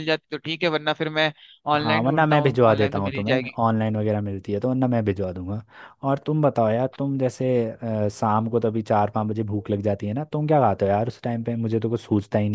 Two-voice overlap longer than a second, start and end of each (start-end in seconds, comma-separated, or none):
1.8-3.6